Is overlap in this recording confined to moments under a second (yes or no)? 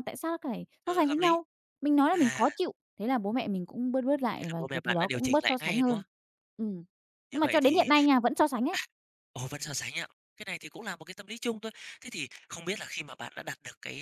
no